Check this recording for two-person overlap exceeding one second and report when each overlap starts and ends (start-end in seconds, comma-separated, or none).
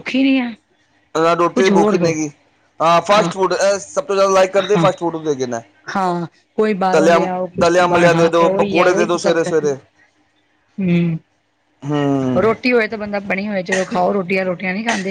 8.1-9.7